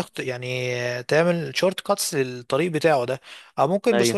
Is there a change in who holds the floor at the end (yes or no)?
no